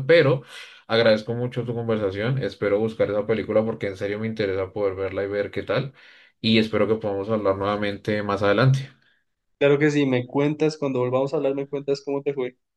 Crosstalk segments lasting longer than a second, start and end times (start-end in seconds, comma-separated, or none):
none